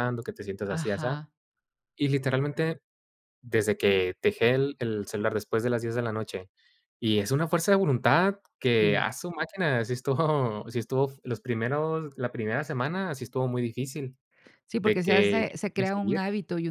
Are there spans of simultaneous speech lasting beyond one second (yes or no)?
yes